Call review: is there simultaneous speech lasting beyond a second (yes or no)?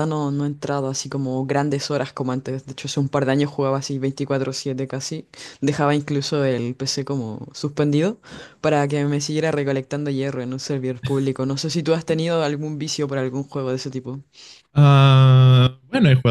no